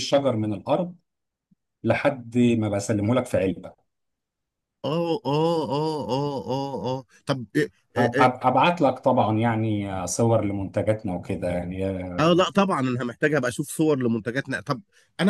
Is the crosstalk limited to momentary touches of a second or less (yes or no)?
yes